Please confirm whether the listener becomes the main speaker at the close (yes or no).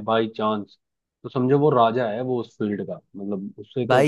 yes